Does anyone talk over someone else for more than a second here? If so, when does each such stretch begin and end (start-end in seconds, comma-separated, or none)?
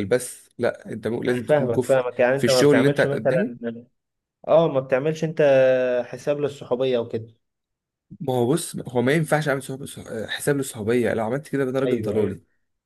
1.3-3.5